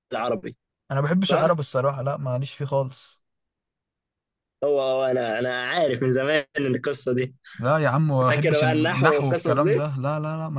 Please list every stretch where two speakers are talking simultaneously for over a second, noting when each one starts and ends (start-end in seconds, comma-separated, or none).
8.3-9.8